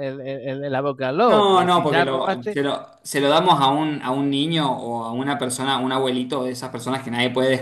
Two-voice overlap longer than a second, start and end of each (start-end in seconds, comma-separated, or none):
1.2-2.6